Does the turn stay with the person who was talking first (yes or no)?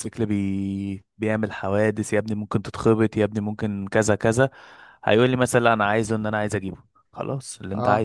yes